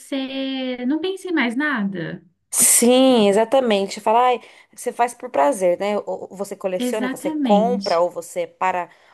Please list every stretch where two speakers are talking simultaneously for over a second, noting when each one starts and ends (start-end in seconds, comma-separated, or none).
6.8-8.0